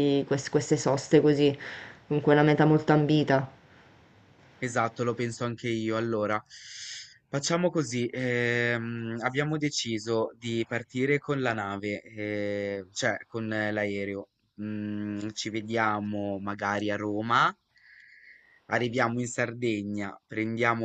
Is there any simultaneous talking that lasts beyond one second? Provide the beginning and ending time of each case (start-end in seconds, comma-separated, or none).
none